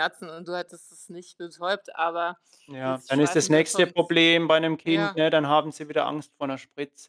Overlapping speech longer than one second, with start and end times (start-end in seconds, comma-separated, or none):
2.8-4.2